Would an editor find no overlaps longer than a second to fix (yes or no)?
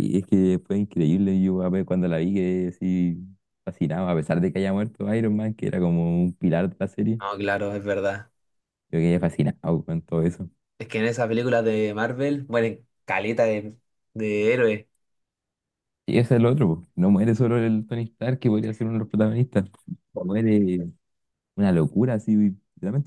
yes